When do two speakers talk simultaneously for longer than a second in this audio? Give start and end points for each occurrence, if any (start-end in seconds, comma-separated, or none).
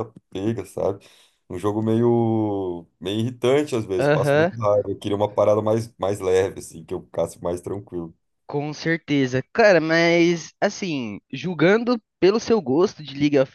none